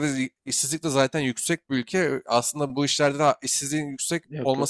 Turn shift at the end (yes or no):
no